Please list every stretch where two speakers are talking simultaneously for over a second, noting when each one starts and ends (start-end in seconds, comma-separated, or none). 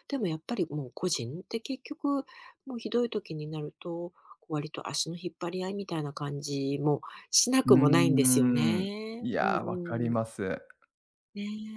7.7-10.2